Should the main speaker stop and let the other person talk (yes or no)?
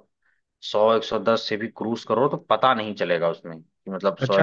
yes